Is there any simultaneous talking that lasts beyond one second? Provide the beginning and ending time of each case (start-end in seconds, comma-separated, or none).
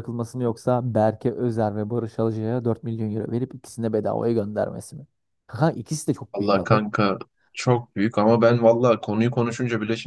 none